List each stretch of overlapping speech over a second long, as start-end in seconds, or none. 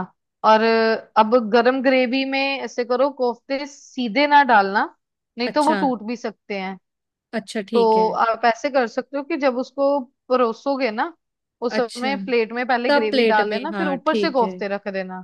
12.9-14.6